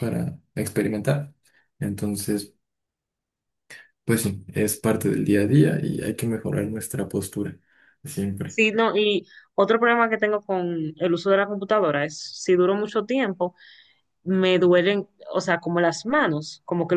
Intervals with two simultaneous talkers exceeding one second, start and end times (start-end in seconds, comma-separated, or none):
none